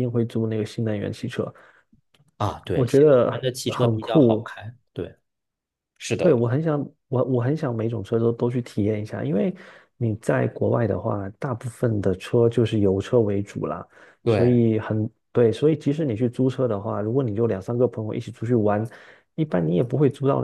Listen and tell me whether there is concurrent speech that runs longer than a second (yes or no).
yes